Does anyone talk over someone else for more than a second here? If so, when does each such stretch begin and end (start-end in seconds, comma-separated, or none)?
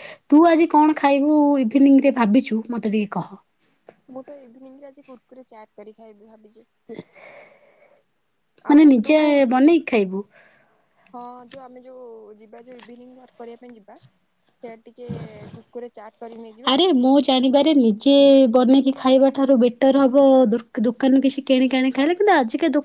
none